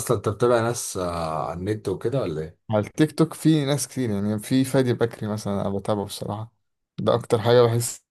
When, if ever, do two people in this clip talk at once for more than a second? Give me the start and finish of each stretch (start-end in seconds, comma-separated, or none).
none